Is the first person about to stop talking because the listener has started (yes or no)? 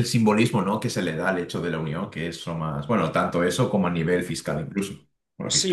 yes